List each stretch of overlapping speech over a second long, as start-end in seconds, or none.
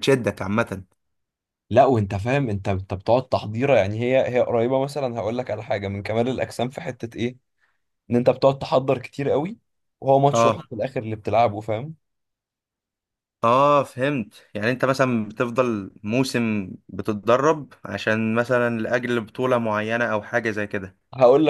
none